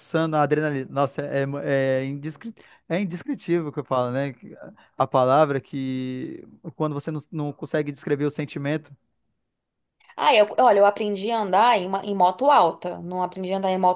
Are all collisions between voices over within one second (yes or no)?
yes